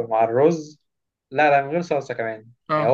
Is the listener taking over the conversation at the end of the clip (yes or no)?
no